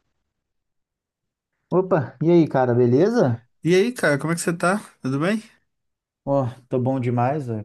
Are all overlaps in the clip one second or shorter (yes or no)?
yes